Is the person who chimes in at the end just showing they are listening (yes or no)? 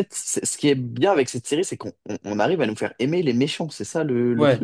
no